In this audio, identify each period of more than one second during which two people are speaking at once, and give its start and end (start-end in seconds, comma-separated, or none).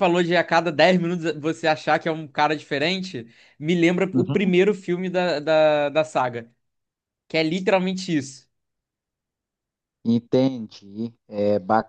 none